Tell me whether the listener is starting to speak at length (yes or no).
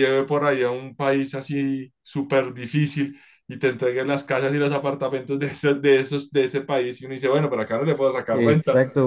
yes